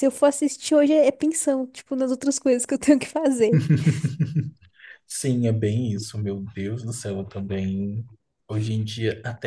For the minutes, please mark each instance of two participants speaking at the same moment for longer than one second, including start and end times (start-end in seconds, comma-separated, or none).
none